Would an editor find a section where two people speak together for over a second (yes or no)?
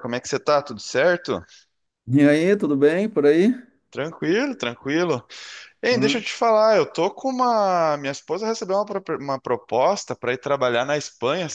no